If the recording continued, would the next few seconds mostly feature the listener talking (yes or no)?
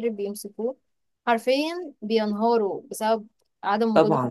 yes